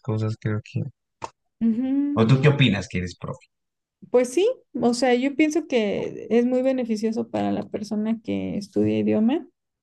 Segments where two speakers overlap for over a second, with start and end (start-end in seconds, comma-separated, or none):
none